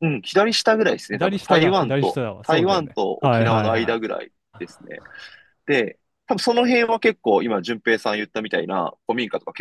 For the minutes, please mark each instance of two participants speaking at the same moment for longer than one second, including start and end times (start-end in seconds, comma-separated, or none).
1.1-4.2